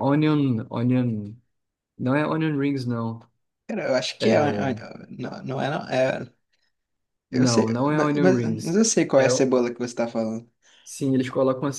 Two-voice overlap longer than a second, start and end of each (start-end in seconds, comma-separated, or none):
7.3-9.5